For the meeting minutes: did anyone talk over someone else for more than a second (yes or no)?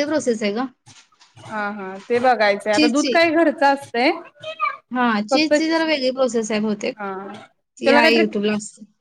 no